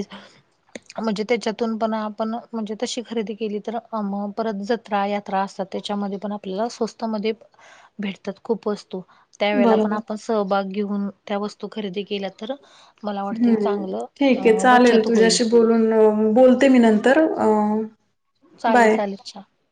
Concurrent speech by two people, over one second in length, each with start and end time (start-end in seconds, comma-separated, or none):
13.3-15.4